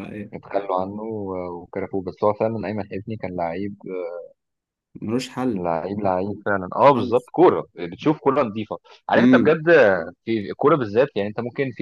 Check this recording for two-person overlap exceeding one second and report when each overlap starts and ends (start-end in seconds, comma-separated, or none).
none